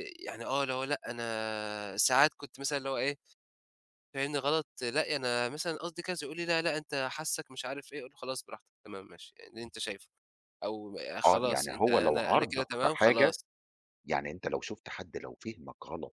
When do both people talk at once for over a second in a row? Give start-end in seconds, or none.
11.2-13.4